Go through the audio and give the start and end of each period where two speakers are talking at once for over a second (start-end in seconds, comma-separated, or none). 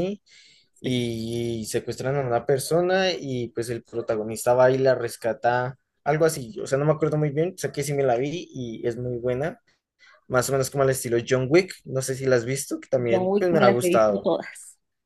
13.1-14.3